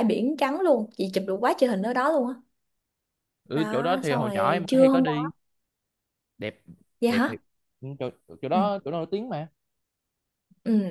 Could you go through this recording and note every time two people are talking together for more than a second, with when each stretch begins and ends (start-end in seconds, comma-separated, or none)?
3.5-5.3